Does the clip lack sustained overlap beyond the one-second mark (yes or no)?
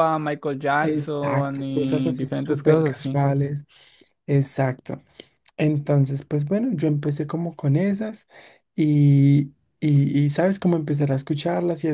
no